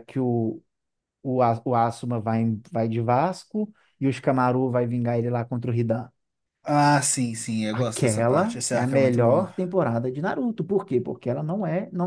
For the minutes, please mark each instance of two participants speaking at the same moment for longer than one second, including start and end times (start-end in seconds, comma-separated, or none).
7.7-9.5